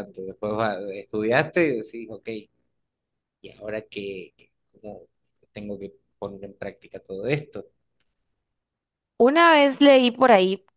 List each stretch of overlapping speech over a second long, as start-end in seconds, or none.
none